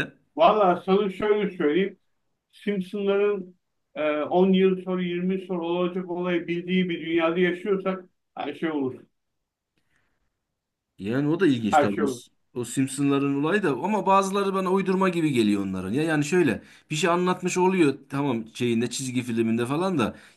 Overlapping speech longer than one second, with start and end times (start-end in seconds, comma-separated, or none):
none